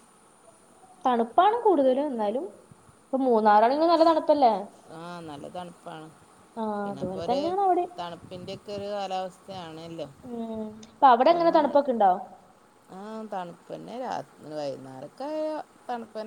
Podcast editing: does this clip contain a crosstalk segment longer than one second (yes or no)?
no